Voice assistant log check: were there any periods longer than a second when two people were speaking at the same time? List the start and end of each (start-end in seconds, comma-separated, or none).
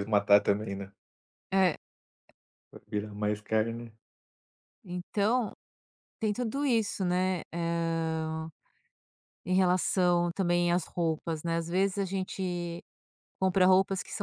none